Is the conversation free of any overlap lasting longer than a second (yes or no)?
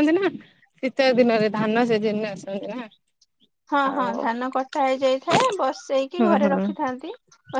yes